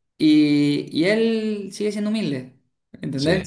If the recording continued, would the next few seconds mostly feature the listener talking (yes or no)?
no